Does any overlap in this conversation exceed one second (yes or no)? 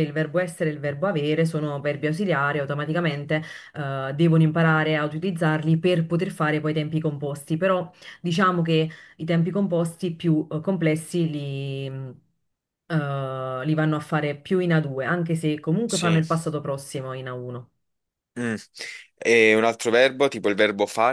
no